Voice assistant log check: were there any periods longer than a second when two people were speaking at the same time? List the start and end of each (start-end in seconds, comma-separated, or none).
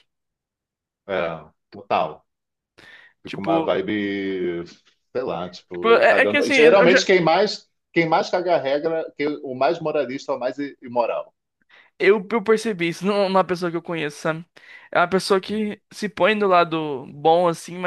5.7-7.0